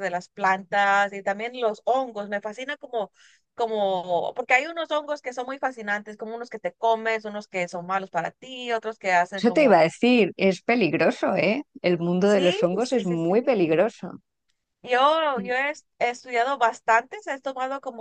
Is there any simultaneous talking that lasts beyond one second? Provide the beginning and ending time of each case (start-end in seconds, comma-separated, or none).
12.2-13.8